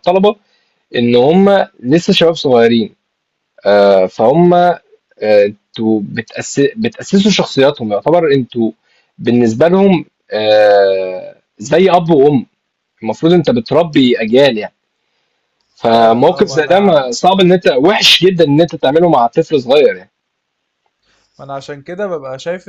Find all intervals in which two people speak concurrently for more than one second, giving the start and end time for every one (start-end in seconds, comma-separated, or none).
15.8-17.0